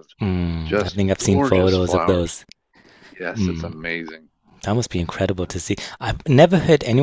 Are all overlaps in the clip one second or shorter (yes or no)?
no